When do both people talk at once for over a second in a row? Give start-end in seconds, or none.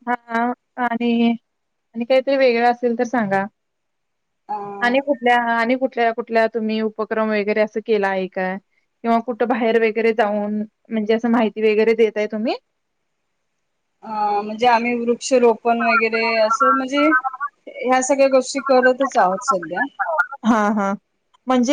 none